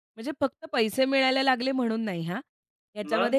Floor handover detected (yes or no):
no